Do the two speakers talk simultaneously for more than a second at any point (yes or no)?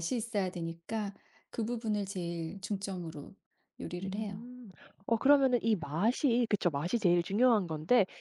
no